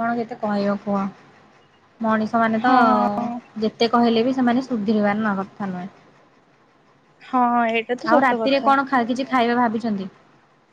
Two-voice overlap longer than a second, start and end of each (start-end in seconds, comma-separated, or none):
none